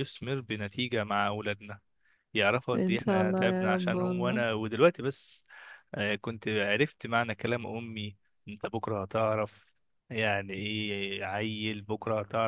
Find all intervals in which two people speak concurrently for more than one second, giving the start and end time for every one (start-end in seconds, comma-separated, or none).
2.7-4.4